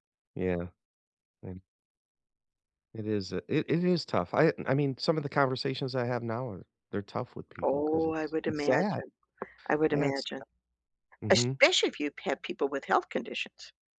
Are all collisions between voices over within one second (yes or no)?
no